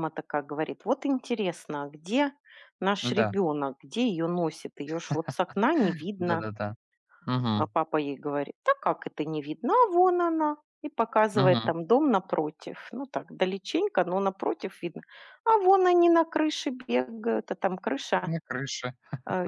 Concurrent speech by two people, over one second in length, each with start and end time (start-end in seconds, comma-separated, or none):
none